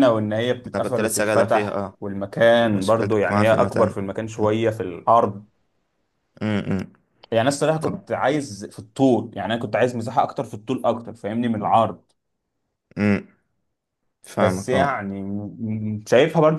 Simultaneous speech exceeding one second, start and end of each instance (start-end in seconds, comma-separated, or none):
0.8-2.0, 2.7-4.0